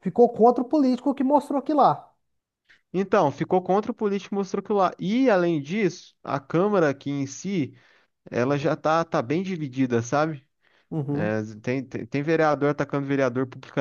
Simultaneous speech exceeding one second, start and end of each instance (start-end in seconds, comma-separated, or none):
none